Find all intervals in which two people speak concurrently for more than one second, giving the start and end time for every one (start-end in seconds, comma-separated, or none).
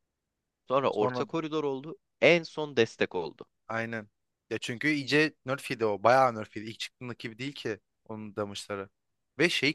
none